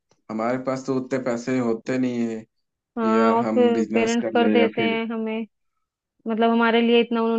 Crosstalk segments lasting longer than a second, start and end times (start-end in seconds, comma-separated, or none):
3.0-5.0